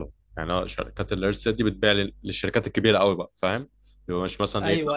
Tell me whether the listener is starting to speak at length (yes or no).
yes